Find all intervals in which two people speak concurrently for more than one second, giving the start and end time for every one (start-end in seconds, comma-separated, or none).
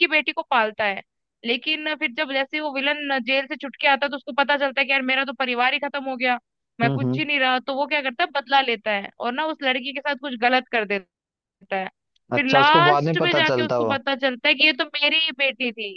12.4-14.0